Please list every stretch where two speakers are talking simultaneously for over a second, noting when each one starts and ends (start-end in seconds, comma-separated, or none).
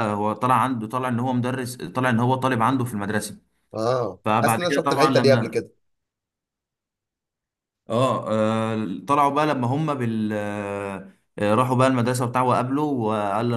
4.2-5.6